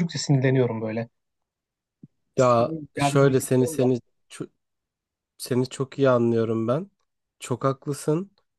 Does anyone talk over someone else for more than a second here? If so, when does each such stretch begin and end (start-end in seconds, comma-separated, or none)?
2.4-3.9